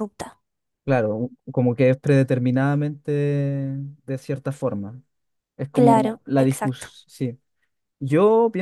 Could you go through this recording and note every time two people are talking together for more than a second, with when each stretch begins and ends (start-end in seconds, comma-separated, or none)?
5.7-6.9